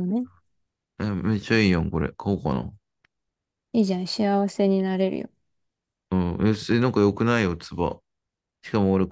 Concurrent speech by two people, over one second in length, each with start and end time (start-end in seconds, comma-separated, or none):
none